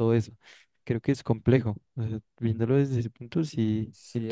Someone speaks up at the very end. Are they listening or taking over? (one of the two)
taking over